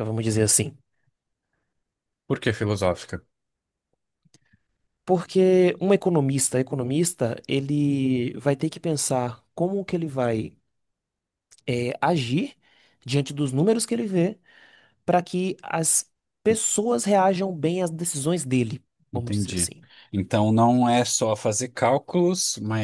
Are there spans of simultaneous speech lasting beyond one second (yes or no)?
no